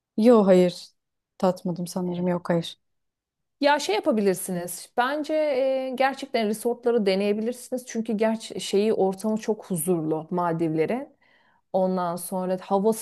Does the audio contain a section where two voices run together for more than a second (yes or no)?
no